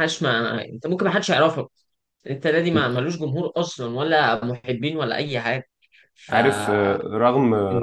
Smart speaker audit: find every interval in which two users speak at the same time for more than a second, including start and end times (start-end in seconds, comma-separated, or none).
none